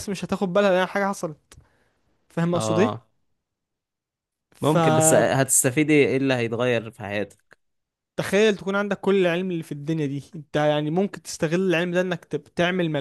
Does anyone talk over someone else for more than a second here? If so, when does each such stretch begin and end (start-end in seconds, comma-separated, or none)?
none